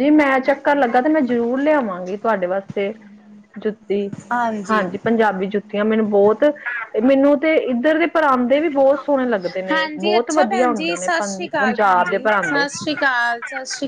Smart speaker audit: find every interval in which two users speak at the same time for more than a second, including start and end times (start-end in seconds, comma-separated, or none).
9.7-12.6